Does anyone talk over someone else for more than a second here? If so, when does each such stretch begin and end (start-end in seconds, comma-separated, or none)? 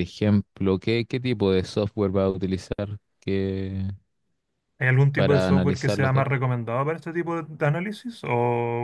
5.1-6.4